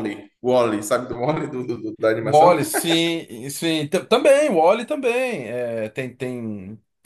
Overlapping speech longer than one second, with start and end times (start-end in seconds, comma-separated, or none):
none